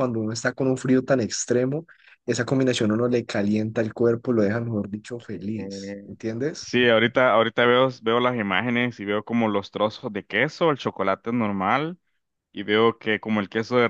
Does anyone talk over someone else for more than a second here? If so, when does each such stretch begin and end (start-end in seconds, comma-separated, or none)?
none